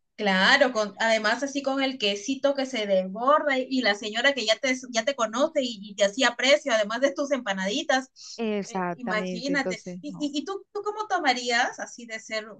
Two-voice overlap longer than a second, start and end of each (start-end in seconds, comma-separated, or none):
8.3-10.3